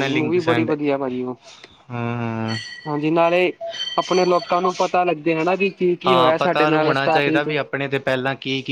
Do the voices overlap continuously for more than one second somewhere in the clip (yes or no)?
yes